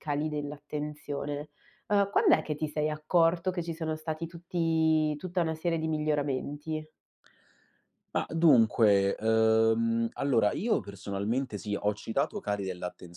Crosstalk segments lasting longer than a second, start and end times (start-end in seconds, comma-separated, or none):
none